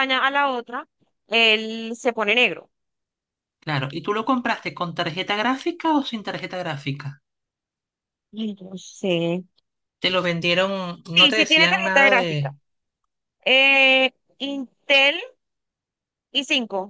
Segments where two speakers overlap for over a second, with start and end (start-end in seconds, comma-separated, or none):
11.1-12.5